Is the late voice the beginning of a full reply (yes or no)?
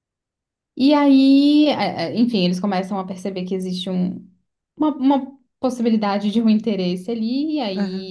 no